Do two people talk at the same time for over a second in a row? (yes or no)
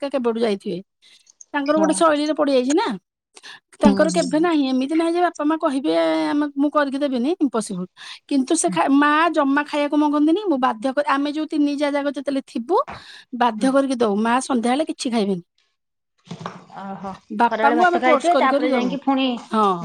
yes